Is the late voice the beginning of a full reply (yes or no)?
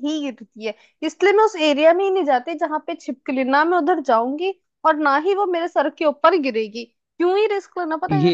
no